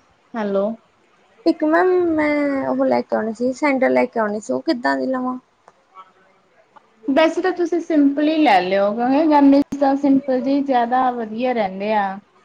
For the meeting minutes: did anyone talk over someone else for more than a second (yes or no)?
no